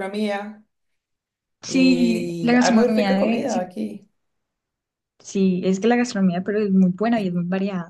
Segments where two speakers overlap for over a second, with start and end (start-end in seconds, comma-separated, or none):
1.6-3.7